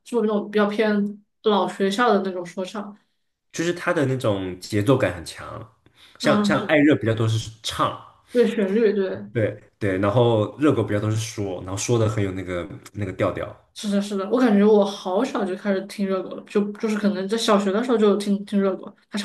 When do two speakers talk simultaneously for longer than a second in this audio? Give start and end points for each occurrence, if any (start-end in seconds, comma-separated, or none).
none